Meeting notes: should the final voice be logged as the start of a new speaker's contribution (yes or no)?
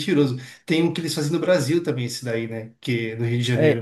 yes